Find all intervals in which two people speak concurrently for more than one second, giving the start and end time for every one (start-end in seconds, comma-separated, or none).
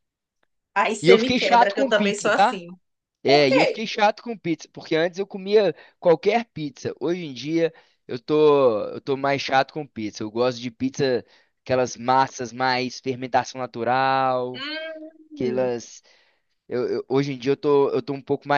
1.0-2.6